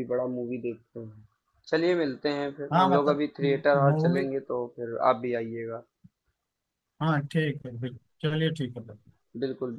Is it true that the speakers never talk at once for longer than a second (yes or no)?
yes